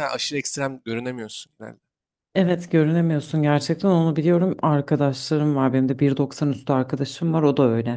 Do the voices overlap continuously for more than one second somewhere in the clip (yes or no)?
no